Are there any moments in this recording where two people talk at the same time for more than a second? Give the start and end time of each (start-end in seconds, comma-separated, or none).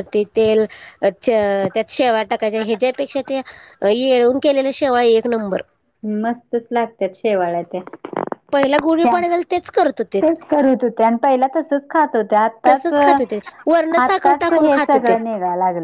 12.7-15.2